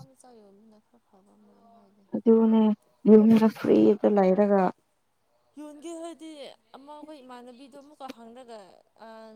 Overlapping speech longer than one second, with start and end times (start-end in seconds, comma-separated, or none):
none